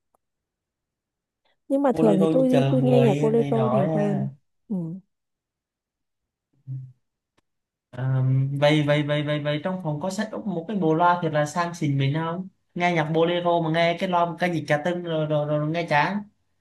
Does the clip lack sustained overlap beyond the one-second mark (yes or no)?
no